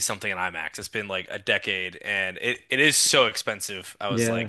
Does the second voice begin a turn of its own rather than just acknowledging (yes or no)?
no